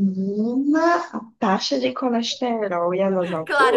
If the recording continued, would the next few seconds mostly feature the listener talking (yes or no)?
yes